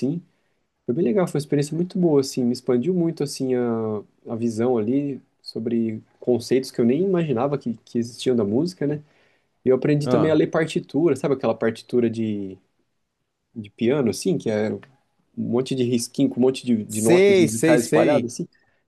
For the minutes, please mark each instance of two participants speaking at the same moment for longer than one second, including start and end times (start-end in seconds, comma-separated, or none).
16.9-18.3